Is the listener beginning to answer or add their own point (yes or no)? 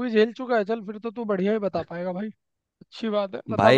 yes